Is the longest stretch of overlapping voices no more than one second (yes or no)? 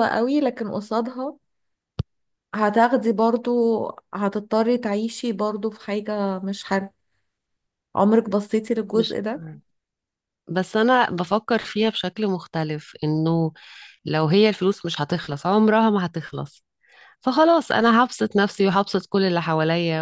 yes